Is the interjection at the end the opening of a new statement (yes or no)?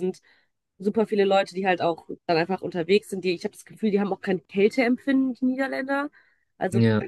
no